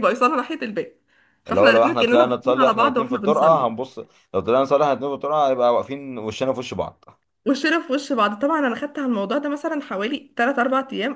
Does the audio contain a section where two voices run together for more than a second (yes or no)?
yes